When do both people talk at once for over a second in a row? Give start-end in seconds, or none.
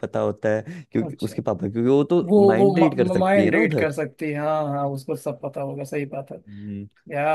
2.3-3.9